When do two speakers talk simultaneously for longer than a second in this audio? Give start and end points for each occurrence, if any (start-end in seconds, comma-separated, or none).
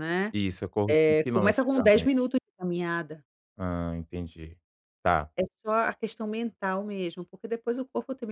0.9-2.3